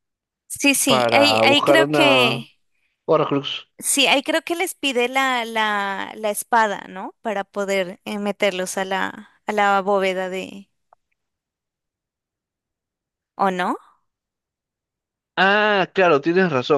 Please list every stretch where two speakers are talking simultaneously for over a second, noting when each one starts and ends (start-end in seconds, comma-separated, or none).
0.8-2.5